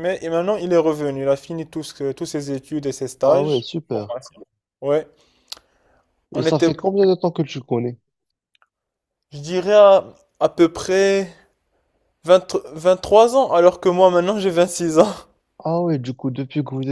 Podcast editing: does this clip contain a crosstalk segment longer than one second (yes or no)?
no